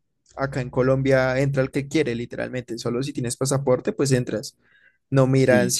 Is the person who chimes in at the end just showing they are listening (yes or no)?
yes